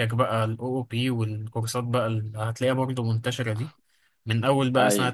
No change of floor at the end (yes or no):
yes